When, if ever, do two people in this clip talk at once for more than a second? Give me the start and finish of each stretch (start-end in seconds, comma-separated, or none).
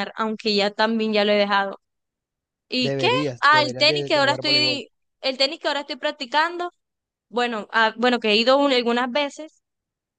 2.8-4.8